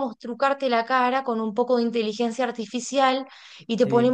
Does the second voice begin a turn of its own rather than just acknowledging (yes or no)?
no